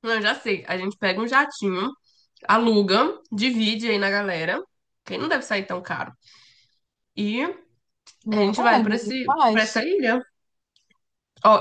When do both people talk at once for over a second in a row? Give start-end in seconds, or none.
8.3-9.8